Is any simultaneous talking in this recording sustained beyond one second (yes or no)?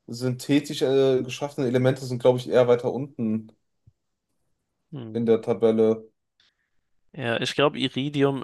no